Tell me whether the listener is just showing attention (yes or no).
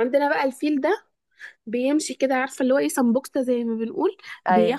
yes